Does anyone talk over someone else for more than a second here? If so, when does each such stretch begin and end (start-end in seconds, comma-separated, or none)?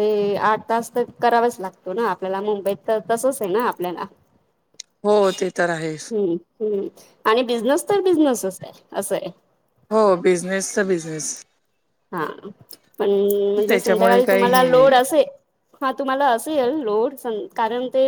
13.7-14.9